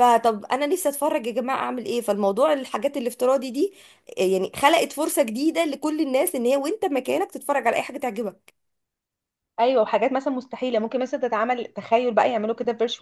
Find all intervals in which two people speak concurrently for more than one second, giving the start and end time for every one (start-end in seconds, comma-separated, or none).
none